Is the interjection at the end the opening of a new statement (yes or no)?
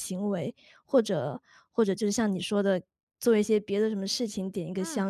no